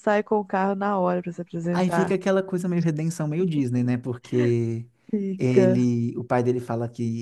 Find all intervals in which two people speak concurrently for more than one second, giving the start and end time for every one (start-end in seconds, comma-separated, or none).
none